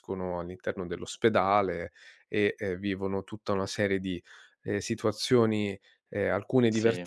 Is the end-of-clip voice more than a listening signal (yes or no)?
no